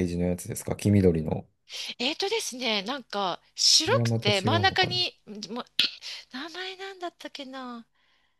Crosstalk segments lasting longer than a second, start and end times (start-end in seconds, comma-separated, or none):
3.9-5.1